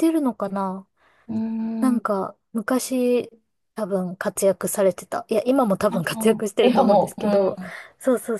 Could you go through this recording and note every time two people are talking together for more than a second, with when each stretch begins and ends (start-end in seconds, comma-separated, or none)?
5.9-7.6